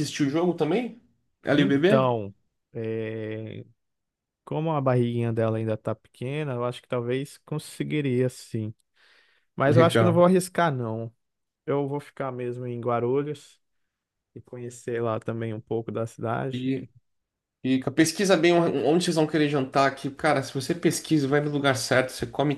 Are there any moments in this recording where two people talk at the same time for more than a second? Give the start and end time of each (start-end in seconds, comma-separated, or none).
none